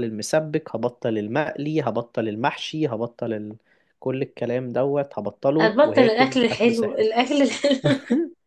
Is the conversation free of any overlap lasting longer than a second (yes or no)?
no